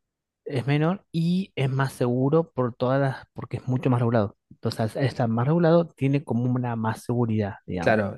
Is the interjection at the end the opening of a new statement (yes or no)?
yes